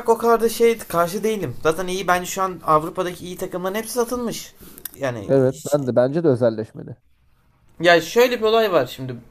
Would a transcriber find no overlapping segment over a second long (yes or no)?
yes